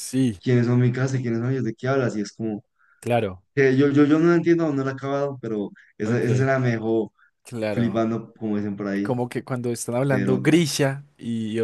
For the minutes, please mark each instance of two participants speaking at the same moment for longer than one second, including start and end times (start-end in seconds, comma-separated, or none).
none